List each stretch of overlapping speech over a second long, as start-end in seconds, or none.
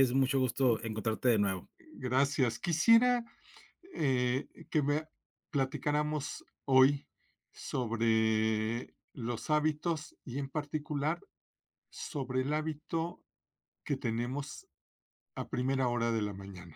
none